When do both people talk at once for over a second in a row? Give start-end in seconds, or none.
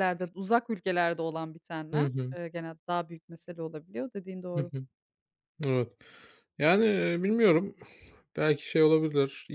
none